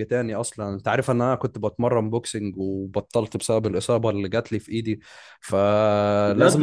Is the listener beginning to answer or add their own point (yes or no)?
yes